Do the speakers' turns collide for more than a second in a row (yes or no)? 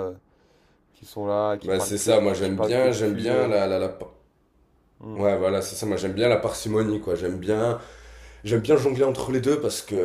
yes